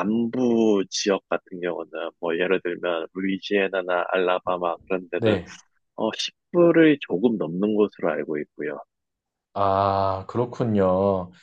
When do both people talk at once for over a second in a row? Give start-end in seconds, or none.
none